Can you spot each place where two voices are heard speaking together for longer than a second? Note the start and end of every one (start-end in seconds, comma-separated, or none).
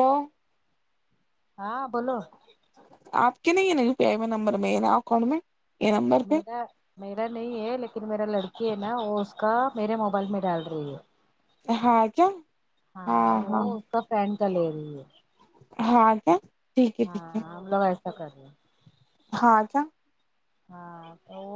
none